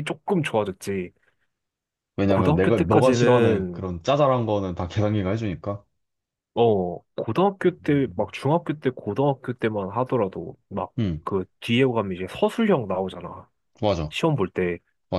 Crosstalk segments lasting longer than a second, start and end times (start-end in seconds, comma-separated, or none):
2.3-3.9